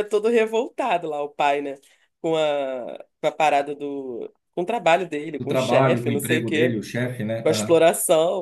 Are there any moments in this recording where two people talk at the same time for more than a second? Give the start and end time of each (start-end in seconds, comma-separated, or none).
5.4-6.8